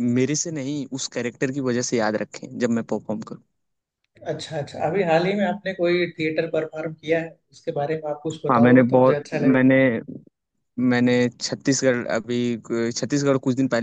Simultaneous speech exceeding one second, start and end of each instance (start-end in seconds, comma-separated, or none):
8.3-9.7